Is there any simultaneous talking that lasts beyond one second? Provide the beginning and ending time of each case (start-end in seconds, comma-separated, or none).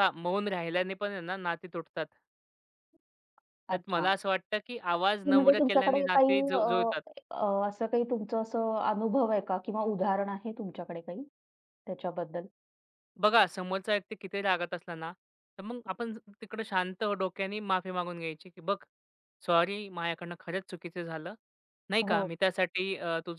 5.2-6.9